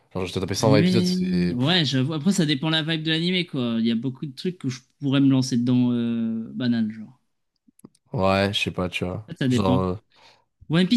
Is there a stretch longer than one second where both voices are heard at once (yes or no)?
yes